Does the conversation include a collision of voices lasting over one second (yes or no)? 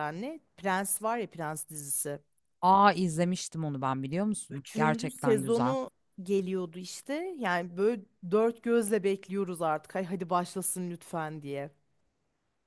yes